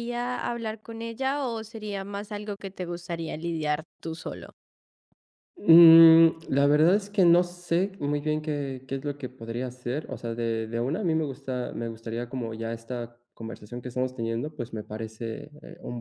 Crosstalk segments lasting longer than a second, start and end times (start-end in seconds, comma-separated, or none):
none